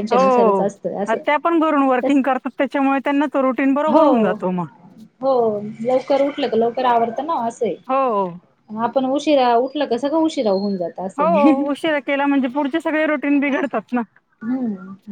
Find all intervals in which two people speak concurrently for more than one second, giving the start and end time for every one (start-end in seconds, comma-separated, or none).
none